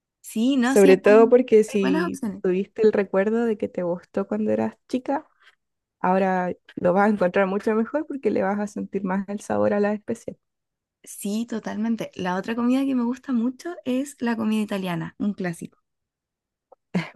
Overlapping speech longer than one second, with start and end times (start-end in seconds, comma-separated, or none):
0.6-2.4